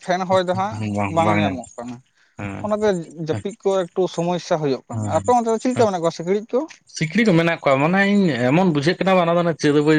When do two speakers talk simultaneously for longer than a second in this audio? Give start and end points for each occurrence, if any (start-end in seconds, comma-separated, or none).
none